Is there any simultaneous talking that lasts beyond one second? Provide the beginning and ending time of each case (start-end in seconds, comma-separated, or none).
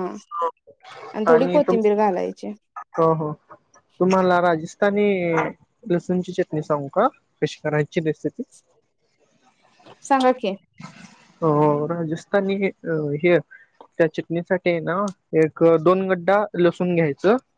none